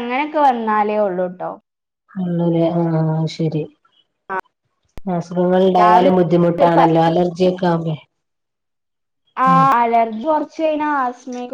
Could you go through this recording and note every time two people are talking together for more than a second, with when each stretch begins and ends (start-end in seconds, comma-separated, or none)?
none